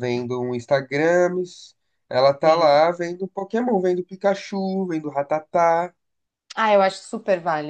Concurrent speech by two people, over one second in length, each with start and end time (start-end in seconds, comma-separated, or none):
none